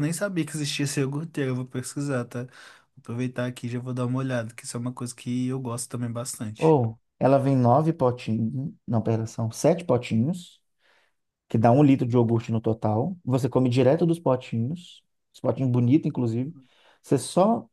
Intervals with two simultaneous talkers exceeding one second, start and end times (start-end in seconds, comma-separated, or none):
none